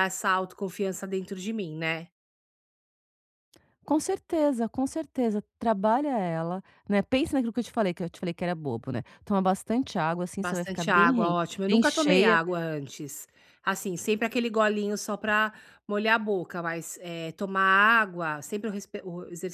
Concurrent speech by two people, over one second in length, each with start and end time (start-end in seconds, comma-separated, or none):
10.4-12.4